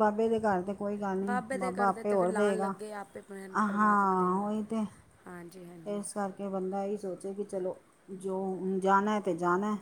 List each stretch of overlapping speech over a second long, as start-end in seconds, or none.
1.2-2.7